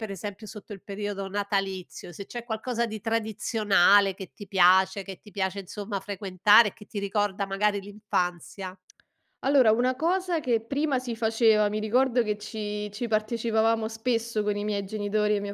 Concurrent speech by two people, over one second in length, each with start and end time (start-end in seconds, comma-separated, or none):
none